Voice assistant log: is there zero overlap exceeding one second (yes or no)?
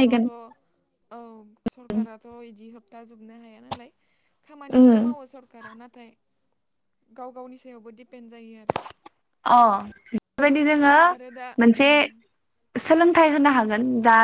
yes